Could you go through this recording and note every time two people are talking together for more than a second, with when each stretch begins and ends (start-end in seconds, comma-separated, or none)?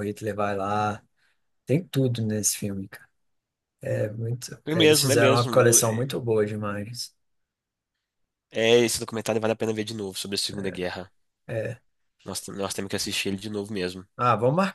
4.7-6.1